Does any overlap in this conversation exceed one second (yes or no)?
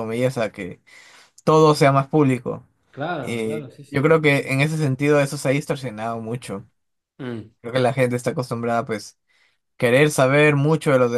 yes